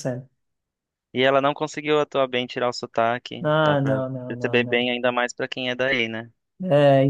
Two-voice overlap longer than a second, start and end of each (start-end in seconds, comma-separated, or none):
3.4-5.0